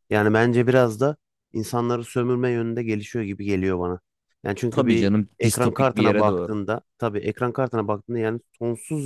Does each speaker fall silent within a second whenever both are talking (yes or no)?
no